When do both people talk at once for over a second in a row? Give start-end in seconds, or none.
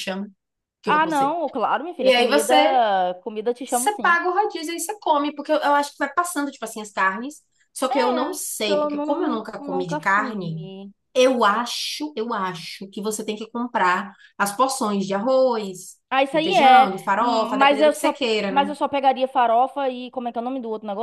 7.9-10.6, 16.1-18.7